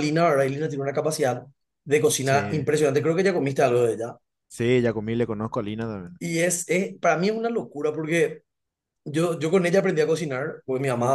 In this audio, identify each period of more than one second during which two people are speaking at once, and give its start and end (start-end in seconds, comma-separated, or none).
none